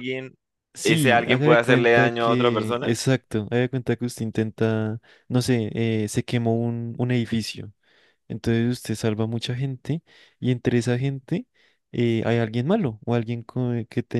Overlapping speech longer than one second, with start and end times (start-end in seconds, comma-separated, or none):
0.8-2.9